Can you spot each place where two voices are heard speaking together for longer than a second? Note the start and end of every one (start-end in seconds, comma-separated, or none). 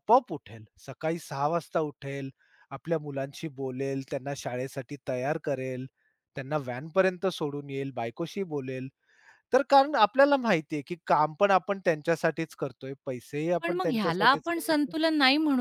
13.6-14.9